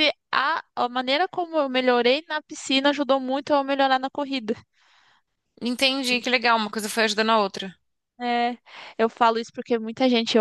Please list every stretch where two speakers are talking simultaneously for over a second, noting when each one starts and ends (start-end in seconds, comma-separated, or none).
none